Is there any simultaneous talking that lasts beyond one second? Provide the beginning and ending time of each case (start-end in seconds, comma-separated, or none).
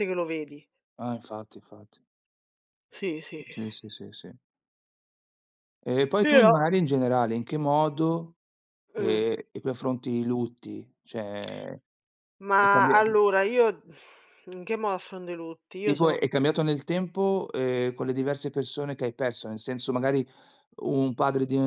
none